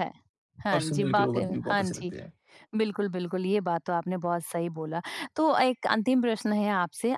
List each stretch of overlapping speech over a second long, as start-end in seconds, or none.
0.7-2.1